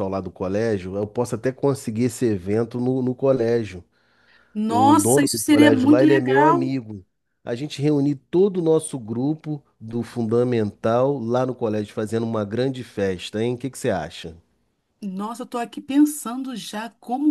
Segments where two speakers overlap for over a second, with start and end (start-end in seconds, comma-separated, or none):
4.7-6.7